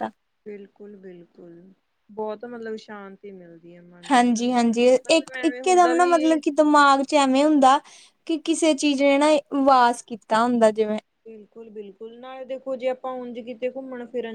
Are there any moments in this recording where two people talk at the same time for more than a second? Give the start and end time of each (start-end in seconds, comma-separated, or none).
4.1-6.4